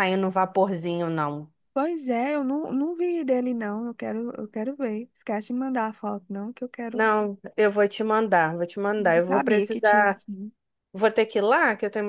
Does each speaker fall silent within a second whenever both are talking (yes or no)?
no